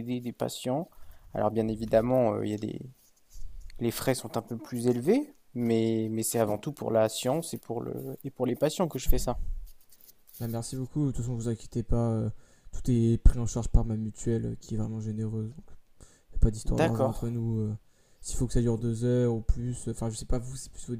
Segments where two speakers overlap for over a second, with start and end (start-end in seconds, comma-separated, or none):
none